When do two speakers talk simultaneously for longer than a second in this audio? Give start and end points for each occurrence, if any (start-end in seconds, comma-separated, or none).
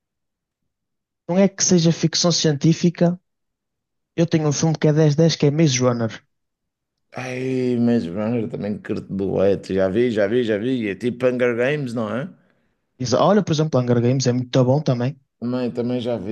none